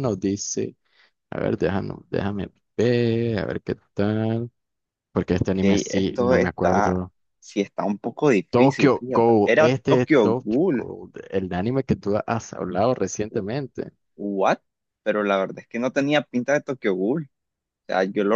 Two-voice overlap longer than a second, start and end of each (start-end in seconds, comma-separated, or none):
5.4-6.9, 8.5-10.9